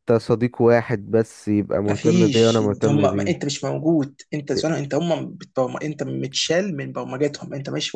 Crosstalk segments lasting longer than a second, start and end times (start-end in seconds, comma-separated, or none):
1.9-3.5